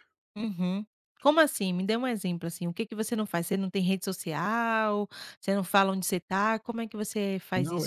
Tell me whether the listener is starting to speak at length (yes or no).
yes